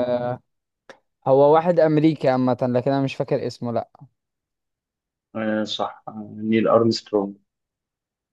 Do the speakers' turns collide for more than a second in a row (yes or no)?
no